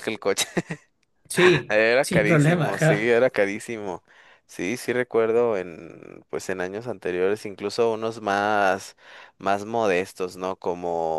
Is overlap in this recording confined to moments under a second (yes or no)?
no